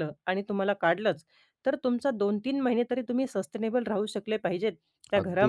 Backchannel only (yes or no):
no